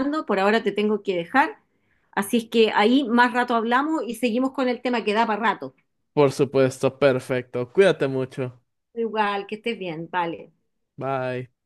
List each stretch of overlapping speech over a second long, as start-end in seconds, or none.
none